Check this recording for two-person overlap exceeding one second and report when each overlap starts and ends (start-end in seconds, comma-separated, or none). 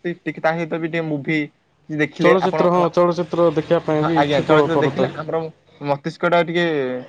2.2-5.0